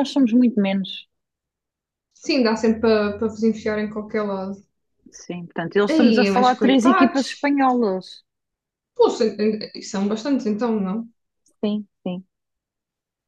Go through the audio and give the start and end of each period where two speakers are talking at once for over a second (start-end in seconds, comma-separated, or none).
5.9-7.5